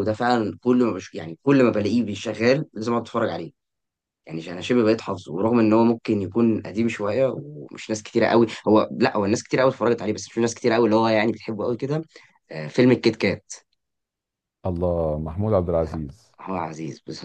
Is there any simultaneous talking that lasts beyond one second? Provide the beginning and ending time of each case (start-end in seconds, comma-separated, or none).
none